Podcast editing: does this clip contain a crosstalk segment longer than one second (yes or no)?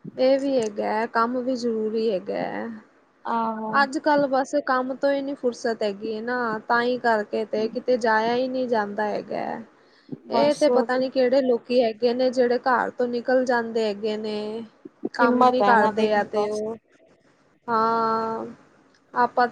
yes